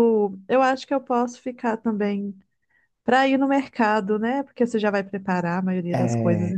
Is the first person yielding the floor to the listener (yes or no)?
yes